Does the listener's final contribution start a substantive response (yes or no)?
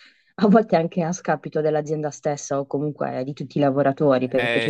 no